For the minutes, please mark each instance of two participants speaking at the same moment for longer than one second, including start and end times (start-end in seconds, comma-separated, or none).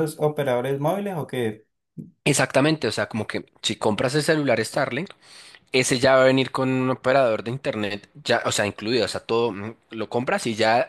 none